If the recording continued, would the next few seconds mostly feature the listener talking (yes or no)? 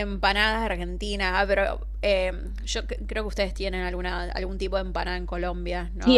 yes